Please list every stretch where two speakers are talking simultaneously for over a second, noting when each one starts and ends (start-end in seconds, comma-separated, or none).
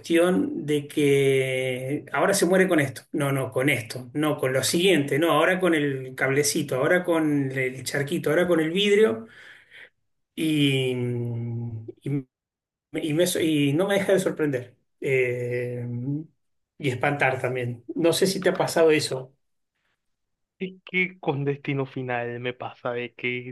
none